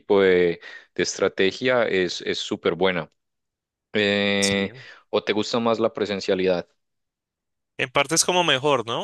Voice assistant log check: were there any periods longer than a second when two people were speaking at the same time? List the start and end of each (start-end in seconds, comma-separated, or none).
none